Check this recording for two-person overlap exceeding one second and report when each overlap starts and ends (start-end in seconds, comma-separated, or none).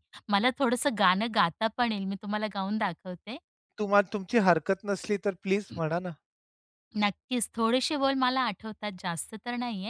none